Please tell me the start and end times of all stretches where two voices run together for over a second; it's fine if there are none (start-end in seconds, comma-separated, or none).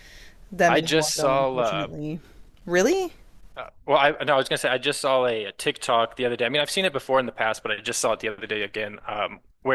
0.7-1.9